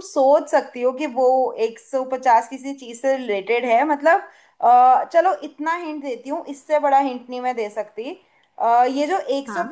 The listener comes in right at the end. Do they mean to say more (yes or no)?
no